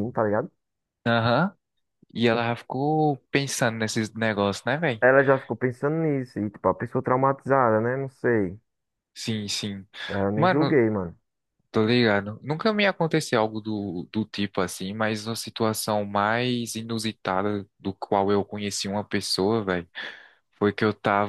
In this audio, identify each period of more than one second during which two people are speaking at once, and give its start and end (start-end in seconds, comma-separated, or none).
none